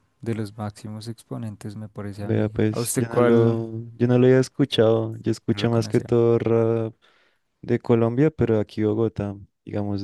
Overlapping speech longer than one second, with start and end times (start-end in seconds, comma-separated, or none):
2.2-3.7